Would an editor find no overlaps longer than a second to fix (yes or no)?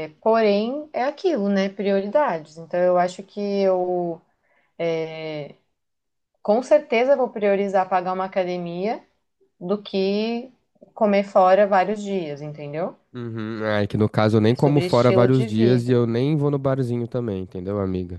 no